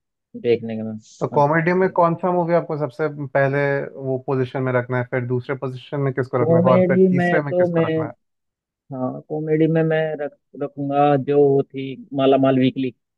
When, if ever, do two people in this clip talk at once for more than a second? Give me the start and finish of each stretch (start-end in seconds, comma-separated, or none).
6.4-7.9